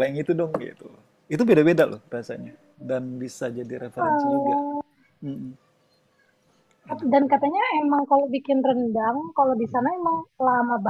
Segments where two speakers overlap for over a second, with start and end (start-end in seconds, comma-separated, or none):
none